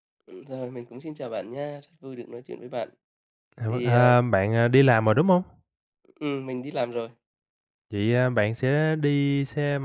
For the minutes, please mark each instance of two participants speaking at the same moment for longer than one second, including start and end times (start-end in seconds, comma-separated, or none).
none